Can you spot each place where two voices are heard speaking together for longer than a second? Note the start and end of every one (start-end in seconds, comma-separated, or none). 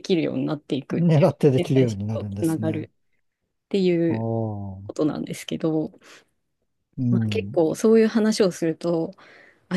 1.0-2.9